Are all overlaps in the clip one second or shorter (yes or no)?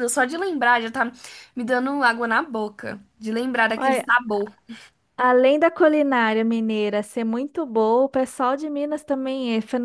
yes